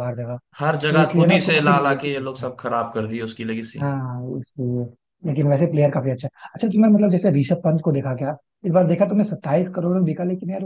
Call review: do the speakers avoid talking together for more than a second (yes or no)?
no